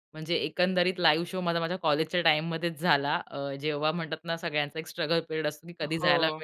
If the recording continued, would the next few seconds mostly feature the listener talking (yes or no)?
no